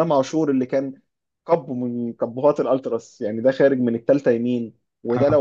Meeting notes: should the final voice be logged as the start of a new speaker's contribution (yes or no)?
no